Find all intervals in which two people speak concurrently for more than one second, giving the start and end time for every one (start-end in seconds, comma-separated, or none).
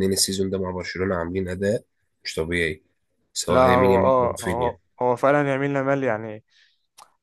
3.5-4.8